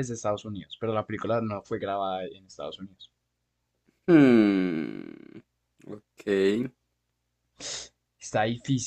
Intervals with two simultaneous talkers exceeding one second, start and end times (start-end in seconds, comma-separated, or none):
none